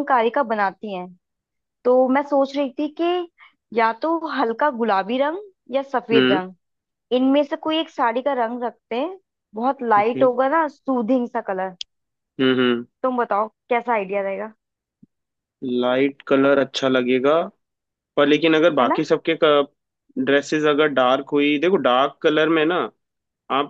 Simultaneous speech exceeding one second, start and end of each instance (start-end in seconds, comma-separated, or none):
none